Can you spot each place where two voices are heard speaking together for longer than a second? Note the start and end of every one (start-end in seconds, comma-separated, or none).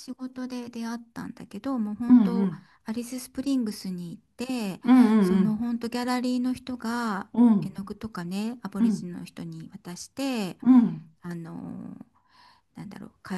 none